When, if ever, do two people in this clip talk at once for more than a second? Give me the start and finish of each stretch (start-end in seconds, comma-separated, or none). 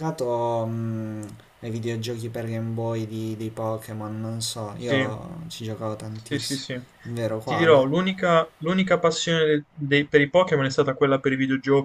none